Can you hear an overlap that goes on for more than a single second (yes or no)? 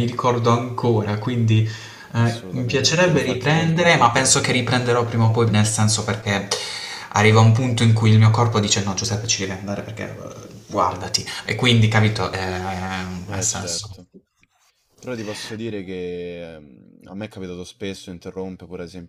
yes